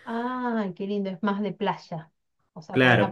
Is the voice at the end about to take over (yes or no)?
yes